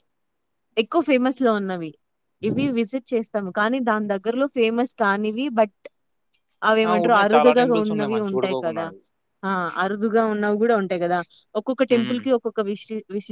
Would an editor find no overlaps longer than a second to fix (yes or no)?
no